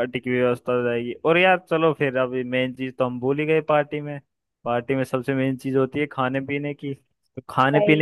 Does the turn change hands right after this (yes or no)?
no